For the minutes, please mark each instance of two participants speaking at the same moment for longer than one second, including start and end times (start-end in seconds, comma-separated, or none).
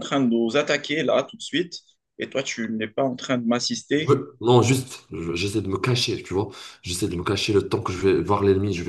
none